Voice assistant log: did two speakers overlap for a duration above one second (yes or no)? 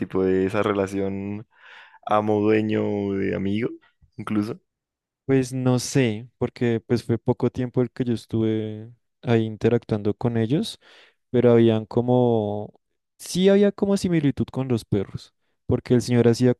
no